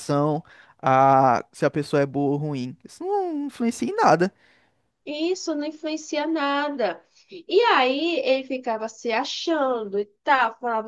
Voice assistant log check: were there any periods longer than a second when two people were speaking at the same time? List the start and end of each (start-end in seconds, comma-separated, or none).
none